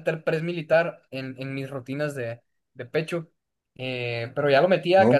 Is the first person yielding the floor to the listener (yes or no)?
no